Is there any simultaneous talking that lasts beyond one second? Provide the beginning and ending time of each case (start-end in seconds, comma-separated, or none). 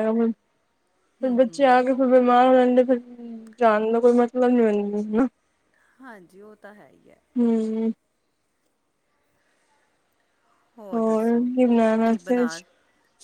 none